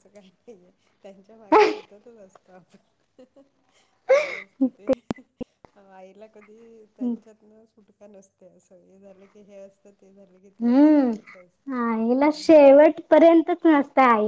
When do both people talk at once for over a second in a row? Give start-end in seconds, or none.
none